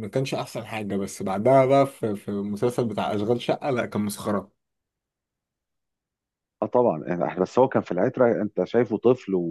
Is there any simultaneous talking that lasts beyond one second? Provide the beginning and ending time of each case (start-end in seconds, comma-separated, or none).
none